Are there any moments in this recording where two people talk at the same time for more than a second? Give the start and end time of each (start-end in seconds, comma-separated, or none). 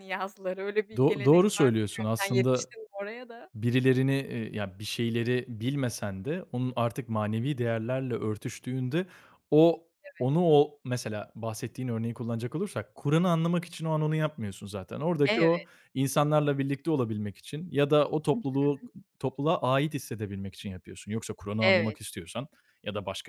1.0-2.7